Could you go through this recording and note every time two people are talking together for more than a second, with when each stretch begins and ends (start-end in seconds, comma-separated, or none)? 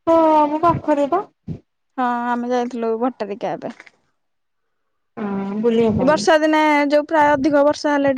none